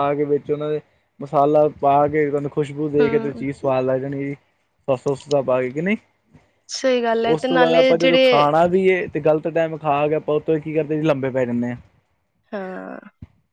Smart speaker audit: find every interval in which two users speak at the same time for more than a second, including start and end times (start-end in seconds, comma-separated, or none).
7.2-8.5